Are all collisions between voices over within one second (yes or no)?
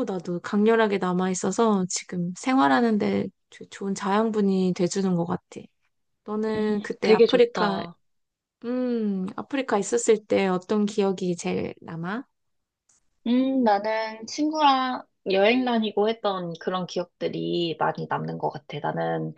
no